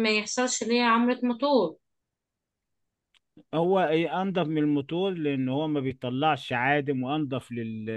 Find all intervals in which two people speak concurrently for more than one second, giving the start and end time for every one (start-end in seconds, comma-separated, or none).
none